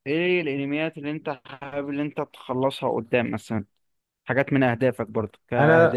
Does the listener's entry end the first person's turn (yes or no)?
yes